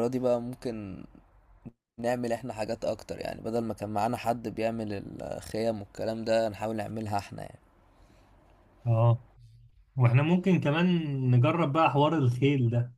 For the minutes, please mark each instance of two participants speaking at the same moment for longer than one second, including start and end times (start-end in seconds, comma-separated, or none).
none